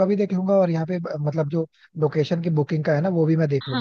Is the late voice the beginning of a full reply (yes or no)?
yes